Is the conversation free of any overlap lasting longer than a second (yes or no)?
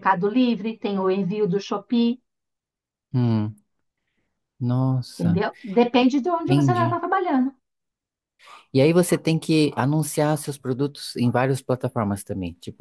yes